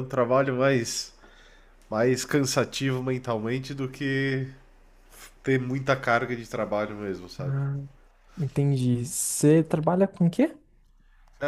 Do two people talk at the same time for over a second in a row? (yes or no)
no